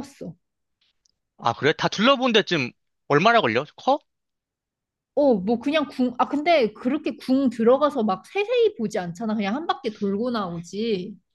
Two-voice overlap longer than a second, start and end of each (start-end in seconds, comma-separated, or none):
none